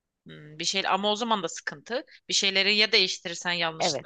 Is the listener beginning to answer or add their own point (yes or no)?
yes